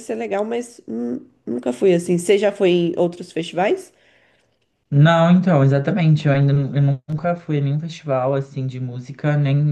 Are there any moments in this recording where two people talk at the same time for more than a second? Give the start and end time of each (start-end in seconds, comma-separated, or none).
none